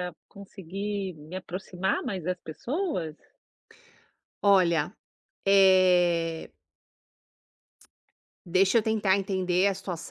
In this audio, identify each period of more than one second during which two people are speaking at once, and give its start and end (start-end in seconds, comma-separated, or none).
none